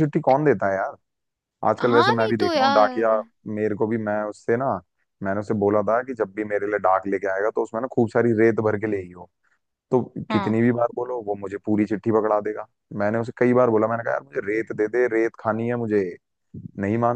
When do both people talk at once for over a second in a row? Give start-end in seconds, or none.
1.8-3.1